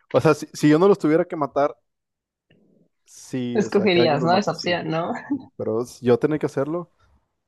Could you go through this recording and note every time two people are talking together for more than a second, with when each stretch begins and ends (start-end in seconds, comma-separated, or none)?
3.5-4.8